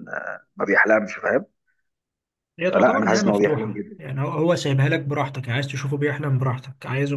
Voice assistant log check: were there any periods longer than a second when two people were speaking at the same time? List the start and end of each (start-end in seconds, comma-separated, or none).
2.7-4.0